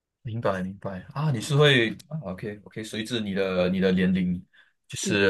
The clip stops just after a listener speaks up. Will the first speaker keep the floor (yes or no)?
yes